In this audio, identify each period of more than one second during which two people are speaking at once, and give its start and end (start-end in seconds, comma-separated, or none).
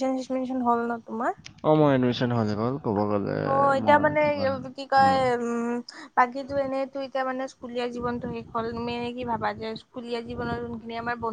none